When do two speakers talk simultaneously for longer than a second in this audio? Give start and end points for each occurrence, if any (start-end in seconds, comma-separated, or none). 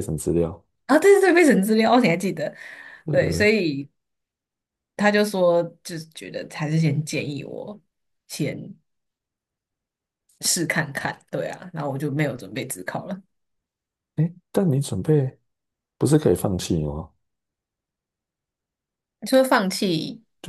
none